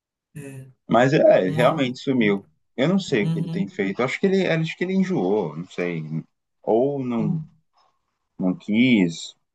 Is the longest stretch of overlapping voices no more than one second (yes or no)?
yes